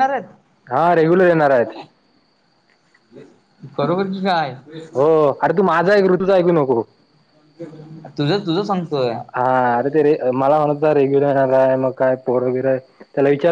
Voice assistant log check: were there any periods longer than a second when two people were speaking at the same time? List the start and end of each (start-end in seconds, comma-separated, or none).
none